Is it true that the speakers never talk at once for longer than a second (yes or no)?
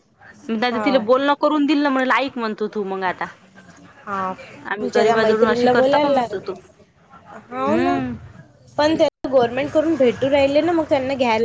no